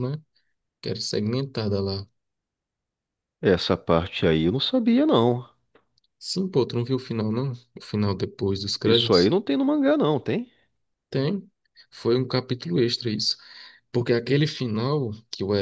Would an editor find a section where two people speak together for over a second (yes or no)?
no